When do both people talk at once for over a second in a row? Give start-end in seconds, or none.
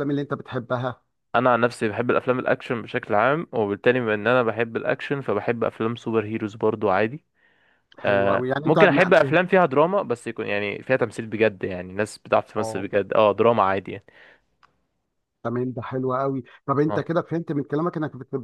8.1-9.4